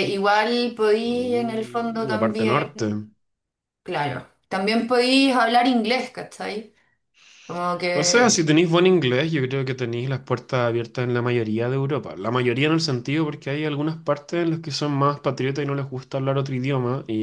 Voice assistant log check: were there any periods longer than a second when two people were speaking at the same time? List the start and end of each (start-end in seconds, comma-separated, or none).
1.0-2.9